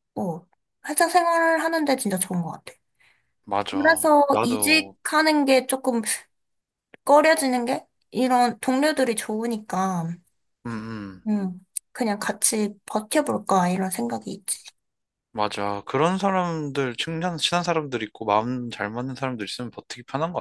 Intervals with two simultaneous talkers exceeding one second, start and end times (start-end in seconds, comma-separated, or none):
3.6-5.0